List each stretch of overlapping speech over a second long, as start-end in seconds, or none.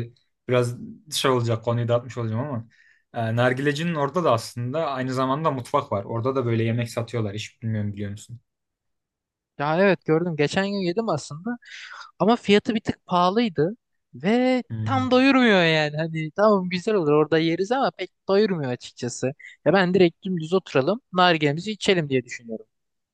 none